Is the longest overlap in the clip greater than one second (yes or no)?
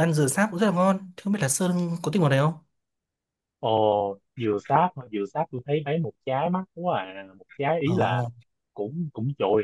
no